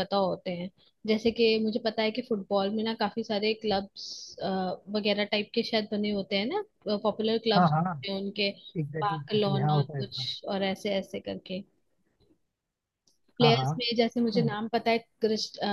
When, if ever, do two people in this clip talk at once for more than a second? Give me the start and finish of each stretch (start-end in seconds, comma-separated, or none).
9.0-10.3